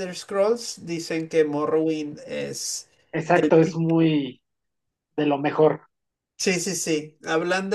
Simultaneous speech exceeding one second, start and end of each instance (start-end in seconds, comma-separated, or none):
none